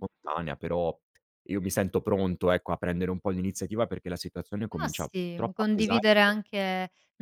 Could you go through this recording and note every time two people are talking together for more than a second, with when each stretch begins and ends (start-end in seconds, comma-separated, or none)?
4.8-6.1